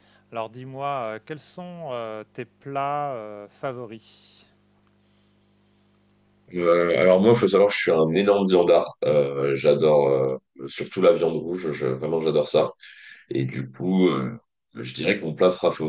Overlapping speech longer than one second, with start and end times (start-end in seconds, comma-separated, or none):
none